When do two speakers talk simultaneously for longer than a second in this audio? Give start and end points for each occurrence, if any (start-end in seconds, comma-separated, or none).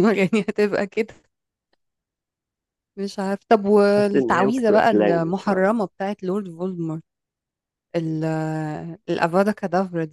4.0-5.7